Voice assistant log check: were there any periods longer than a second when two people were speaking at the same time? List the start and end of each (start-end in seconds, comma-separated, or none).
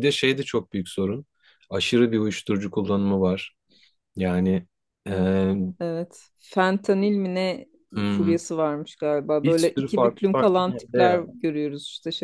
9.4-11.2